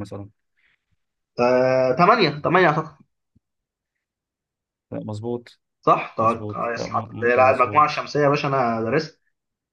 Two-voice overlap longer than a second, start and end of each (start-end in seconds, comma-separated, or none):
6.2-8.0